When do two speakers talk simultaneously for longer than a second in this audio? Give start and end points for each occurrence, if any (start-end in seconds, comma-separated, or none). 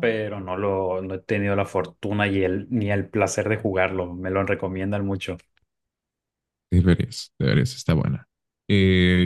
none